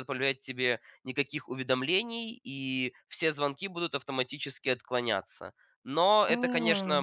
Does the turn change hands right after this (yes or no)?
no